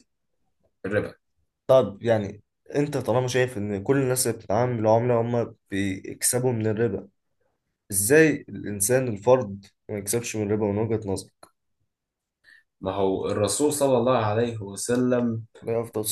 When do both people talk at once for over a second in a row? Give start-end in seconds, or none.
none